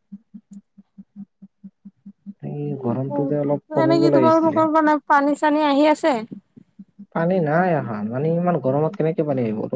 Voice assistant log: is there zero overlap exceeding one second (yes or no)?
no